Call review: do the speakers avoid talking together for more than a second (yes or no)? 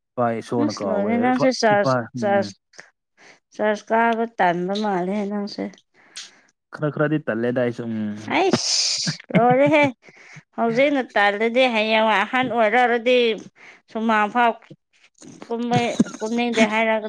no